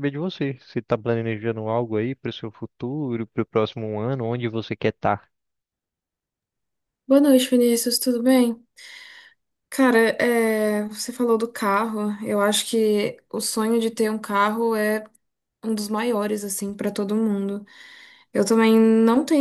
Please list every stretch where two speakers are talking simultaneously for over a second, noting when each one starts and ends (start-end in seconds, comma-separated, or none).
none